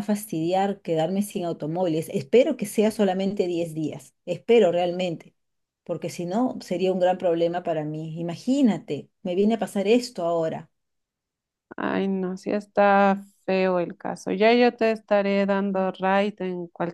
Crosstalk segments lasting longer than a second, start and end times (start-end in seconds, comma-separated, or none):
none